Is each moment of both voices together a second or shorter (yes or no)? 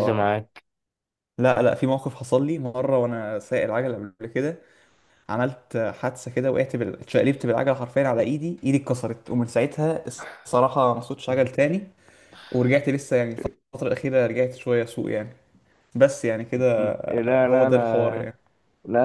no